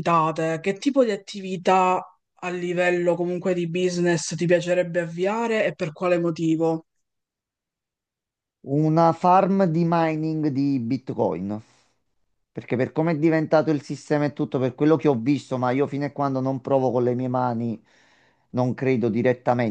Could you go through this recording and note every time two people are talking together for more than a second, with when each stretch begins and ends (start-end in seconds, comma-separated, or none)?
none